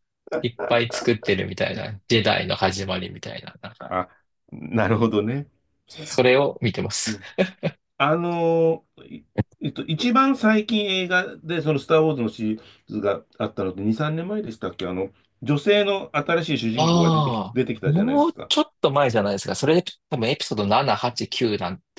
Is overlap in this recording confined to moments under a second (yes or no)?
no